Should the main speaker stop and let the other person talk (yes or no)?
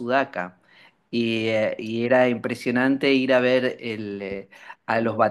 no